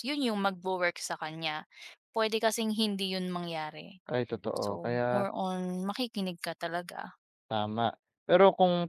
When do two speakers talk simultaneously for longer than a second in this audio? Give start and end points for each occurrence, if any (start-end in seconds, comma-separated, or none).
none